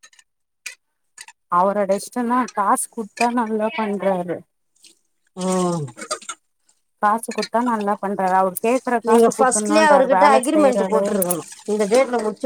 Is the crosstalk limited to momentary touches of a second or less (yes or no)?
no